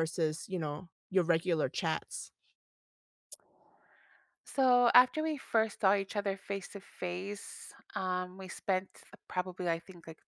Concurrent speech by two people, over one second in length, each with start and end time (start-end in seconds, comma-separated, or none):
none